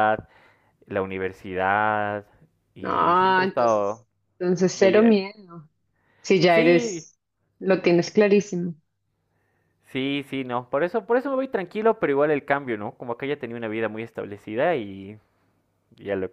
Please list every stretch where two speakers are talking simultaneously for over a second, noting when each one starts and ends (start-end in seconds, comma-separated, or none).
2.8-4.1